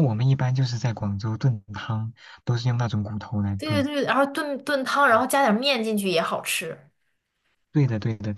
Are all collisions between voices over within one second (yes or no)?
yes